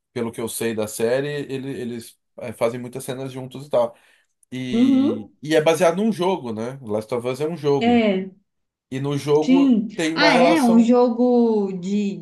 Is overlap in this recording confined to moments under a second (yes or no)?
no